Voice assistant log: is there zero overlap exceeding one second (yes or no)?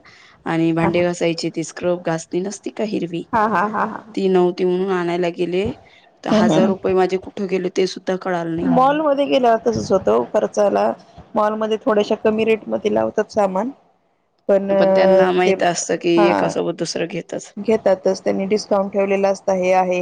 yes